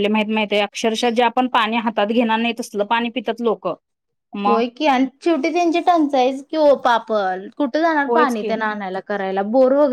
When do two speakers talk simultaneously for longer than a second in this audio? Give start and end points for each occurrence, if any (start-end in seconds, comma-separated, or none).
none